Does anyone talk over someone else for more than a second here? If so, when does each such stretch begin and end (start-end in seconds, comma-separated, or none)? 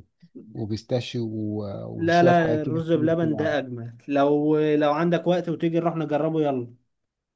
1.9-3.6